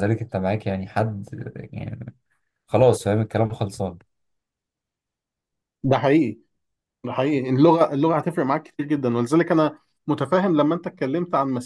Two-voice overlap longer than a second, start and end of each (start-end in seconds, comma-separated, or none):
none